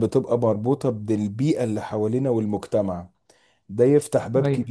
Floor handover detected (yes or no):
no